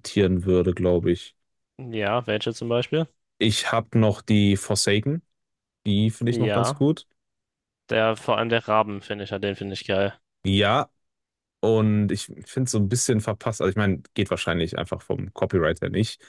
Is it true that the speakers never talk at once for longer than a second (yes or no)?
yes